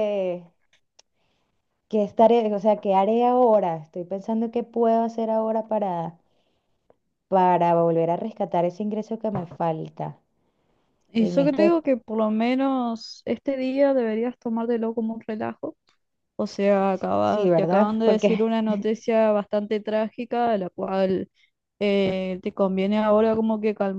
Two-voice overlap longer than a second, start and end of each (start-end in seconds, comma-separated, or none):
17.2-18.5